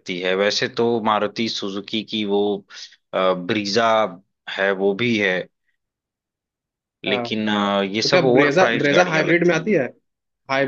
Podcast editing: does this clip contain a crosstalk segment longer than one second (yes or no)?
yes